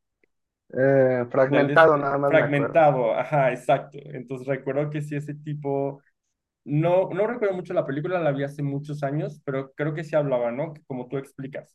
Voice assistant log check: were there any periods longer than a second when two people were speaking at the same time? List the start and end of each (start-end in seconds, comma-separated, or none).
1.4-2.8